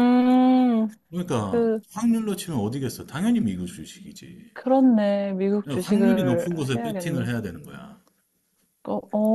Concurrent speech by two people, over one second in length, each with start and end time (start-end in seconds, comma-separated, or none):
5.6-7.3